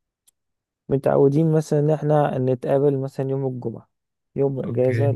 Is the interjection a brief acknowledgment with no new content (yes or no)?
yes